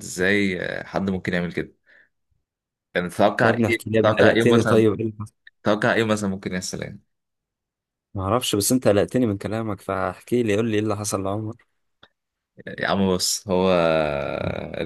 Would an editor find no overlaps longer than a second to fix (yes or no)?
no